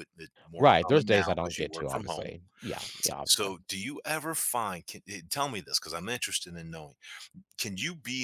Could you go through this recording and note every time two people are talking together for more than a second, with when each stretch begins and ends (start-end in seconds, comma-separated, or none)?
0.6-2.3